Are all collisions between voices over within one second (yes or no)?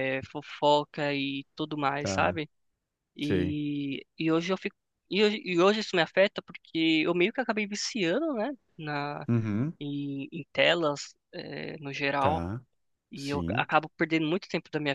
yes